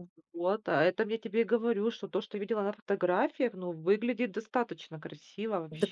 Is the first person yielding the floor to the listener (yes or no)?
yes